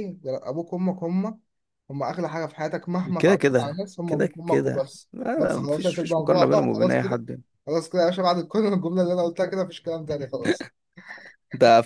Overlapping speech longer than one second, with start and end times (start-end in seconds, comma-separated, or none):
3.2-7.2